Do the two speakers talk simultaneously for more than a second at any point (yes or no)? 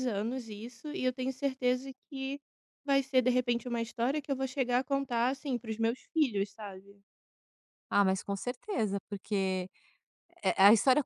no